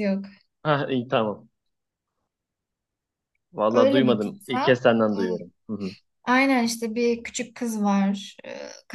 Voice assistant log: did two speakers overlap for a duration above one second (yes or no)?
yes